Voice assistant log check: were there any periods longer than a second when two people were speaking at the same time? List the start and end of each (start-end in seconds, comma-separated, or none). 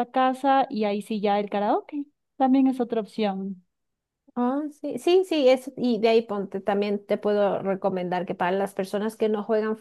none